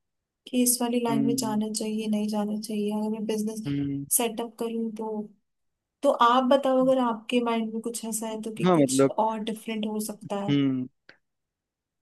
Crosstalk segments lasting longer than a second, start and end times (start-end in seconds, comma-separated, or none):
none